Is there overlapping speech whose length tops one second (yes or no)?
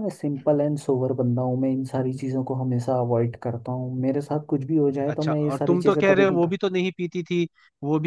yes